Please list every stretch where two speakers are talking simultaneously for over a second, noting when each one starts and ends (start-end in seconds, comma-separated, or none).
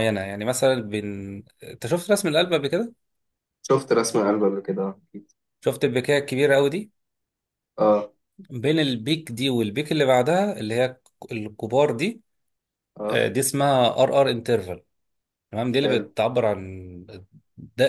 none